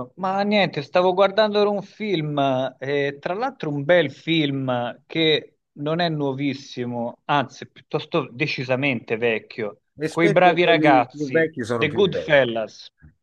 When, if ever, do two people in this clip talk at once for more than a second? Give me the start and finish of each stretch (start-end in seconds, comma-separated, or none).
10.0-12.4